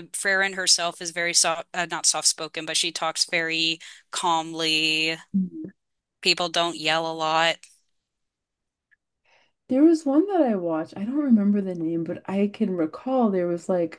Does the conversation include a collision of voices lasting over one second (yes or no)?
no